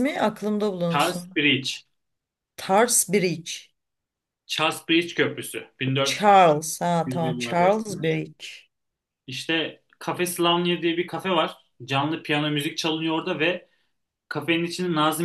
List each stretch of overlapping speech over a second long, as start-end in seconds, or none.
6.0-8.1